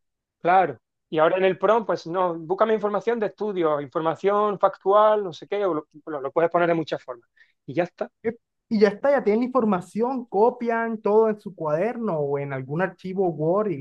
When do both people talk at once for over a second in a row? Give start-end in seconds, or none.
none